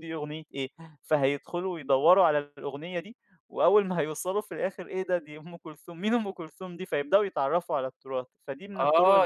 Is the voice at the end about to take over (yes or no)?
yes